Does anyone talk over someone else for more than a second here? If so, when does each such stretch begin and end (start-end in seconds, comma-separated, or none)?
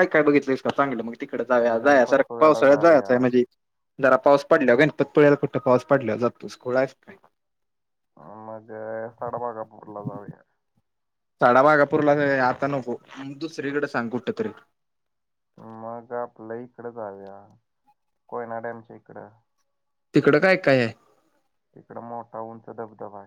1.4-3.1